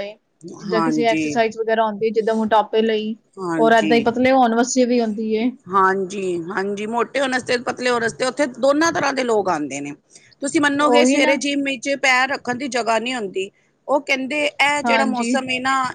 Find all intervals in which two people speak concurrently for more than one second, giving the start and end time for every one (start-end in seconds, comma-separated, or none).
none